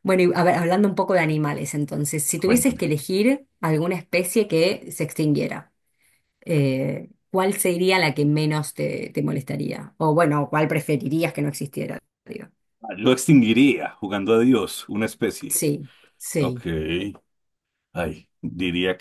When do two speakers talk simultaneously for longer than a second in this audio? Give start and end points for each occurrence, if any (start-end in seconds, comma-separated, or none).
none